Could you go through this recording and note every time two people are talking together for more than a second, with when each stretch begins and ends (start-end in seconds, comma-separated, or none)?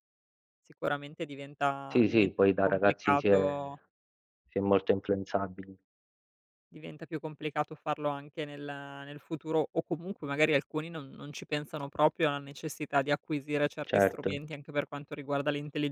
1.9-3.8